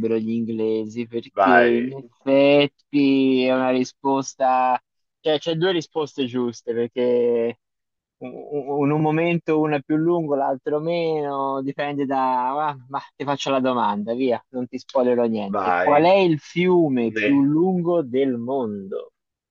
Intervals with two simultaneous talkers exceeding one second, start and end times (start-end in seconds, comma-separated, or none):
none